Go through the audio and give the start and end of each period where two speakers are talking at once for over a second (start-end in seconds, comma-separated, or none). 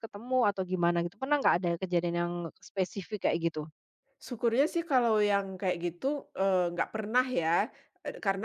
none